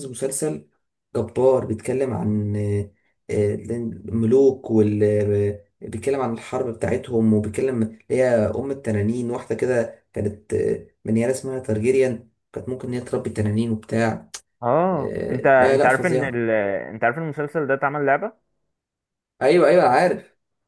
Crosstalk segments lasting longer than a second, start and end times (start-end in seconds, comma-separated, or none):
14.9-16.4